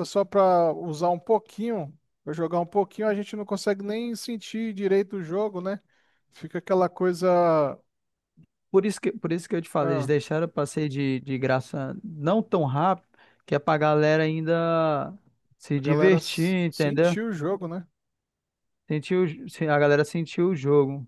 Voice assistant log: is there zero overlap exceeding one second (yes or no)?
no